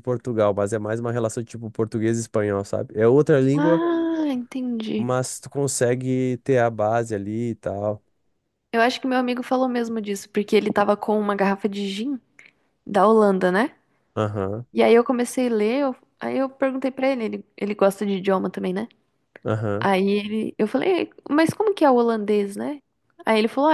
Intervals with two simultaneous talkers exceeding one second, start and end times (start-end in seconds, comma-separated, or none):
none